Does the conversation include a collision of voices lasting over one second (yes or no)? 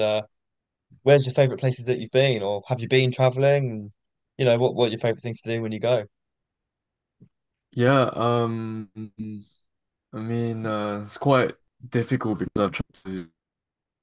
no